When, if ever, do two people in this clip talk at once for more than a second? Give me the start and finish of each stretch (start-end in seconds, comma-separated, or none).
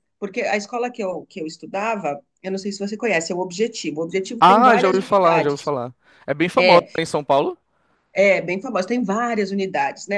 4.4-5.7